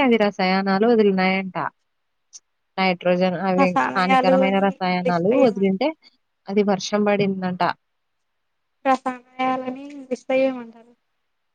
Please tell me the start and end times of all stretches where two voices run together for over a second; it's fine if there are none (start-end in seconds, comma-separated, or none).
3.6-5.9